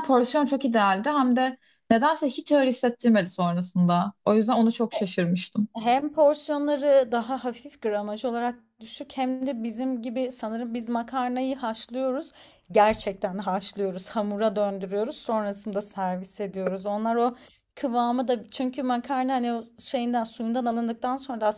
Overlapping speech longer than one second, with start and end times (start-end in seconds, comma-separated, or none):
none